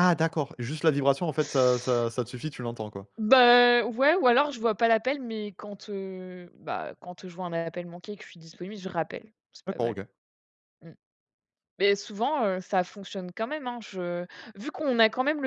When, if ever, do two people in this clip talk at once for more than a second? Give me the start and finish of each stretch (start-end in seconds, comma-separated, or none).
none